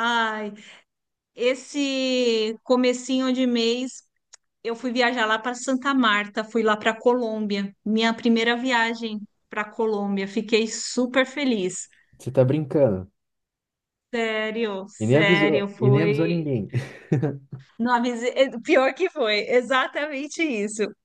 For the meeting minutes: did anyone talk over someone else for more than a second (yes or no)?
yes